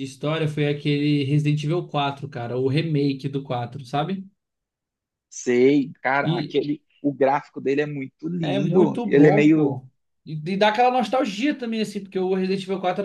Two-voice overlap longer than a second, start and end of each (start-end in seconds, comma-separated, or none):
8.4-9.8